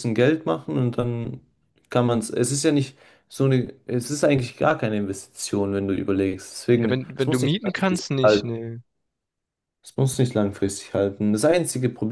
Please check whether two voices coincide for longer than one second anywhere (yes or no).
yes